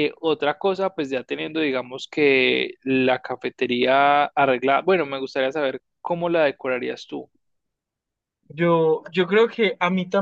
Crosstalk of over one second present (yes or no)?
no